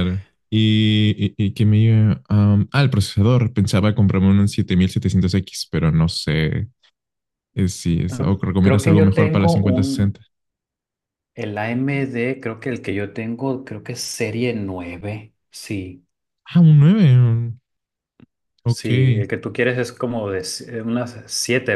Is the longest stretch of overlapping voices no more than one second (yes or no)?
no